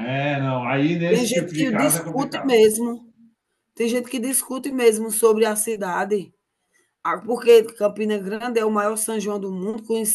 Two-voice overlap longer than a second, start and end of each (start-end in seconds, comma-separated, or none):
1.1-2.6